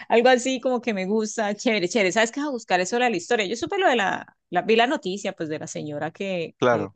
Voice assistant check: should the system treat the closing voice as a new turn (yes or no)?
no